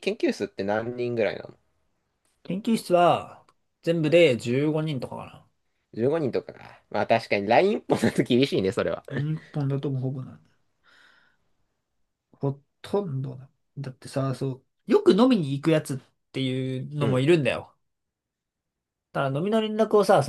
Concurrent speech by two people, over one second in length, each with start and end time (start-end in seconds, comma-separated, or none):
none